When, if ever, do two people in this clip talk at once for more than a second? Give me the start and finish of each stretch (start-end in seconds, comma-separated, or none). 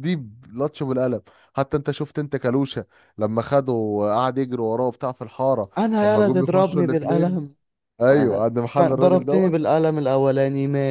5.8-7.4, 8.1-9.5